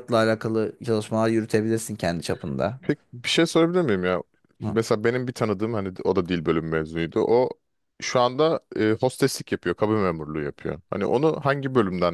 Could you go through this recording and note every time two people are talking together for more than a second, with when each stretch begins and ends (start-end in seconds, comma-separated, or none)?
none